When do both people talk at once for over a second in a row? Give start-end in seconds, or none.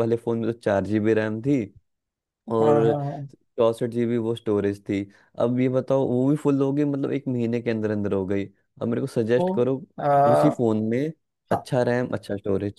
none